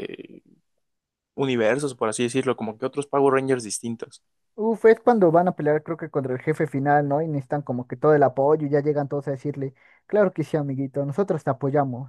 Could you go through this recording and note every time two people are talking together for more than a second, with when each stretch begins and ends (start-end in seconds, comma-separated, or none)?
none